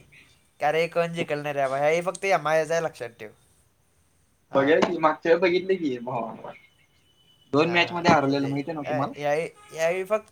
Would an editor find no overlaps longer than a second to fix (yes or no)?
yes